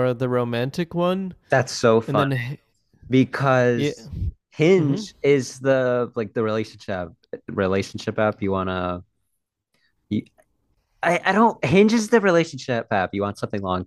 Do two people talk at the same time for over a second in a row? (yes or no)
no